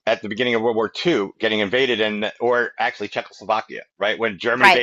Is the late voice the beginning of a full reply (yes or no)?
no